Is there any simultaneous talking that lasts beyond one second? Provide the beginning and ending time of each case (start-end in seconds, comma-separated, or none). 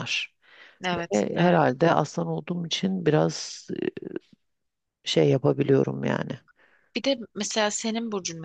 none